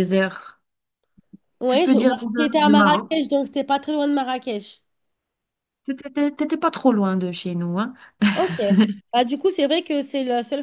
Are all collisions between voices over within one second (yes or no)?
no